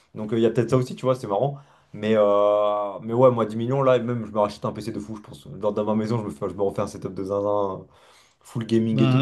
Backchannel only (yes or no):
yes